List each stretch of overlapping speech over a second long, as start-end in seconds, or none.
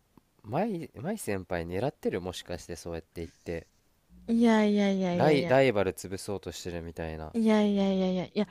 none